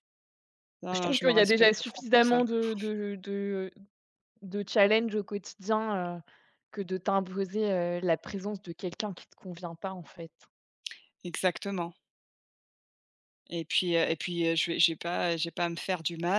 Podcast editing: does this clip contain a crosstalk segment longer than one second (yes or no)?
yes